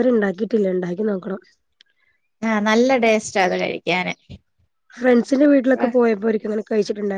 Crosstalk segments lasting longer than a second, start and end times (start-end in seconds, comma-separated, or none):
none